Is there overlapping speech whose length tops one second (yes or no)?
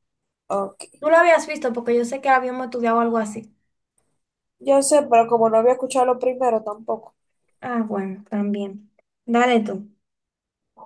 no